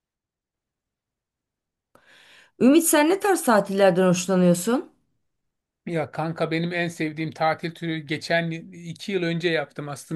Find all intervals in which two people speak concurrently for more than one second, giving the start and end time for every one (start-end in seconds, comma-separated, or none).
none